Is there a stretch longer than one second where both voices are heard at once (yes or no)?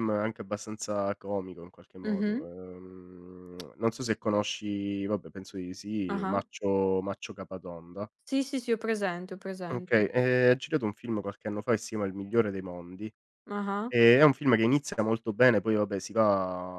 no